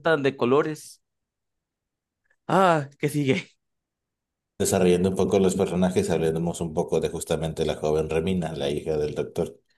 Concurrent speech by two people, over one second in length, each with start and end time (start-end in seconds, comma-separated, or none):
none